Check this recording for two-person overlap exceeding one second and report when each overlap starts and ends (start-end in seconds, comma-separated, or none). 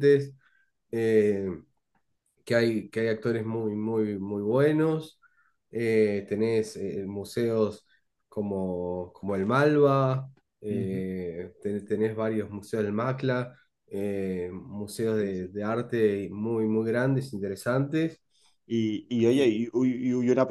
none